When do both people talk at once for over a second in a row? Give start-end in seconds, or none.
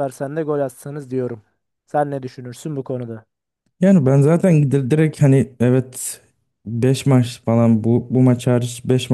none